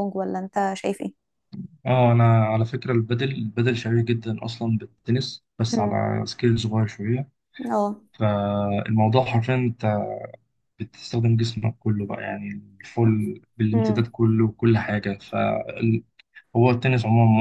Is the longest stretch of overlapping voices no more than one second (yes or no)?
yes